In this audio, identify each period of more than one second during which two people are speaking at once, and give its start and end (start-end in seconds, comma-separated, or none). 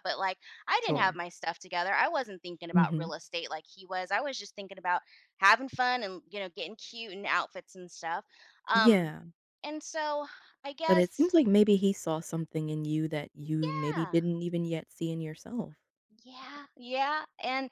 none